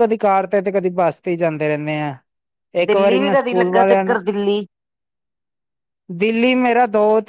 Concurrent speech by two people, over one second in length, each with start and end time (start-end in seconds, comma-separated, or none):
2.9-4.2